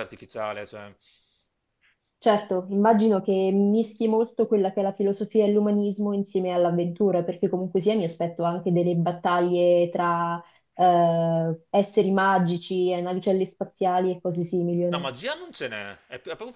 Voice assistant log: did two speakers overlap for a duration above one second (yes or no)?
no